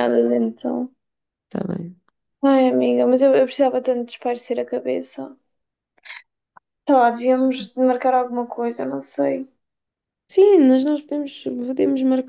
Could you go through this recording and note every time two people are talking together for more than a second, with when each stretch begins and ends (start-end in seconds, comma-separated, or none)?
none